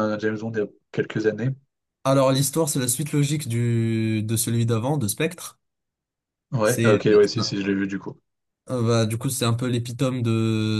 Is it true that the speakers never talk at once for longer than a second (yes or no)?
yes